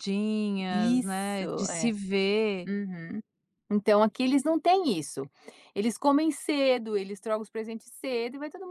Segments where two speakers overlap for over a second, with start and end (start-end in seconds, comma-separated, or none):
0.7-1.9